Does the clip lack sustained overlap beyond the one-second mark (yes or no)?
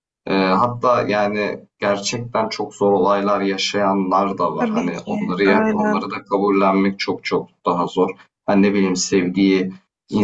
no